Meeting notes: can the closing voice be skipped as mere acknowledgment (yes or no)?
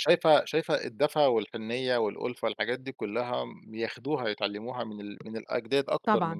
yes